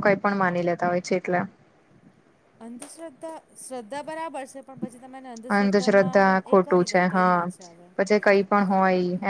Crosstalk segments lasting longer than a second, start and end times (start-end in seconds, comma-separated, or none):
5.6-7.4